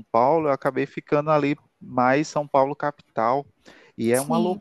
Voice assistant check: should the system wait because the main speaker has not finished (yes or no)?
yes